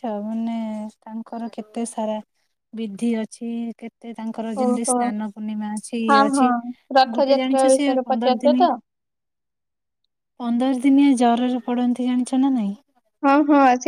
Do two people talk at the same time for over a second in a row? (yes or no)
yes